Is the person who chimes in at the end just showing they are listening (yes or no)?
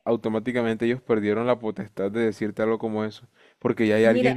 yes